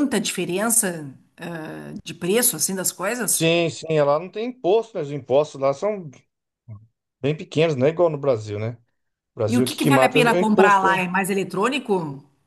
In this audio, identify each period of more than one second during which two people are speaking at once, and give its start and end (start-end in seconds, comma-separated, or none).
9.5-11.0